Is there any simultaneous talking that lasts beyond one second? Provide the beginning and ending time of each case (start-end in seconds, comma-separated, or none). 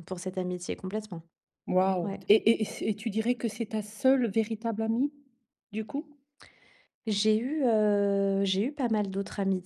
none